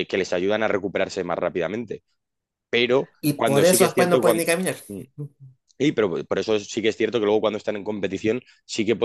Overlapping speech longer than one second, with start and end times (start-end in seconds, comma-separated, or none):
3.2-4.4